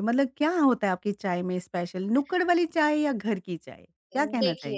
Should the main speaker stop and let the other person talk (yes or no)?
yes